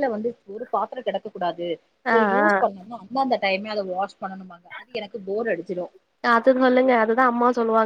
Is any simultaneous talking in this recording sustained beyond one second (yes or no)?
no